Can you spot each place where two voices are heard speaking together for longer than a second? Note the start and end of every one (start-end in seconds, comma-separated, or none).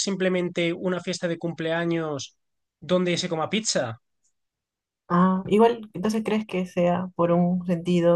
none